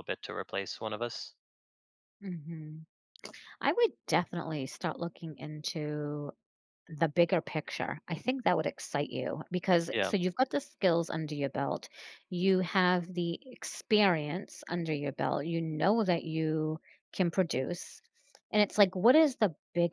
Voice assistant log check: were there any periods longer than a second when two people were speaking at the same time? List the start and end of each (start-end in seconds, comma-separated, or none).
none